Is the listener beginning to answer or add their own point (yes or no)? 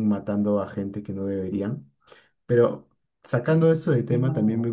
no